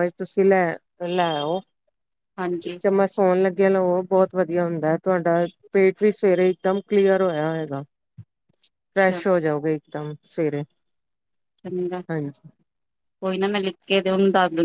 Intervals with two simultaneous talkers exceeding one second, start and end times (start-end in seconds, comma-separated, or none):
none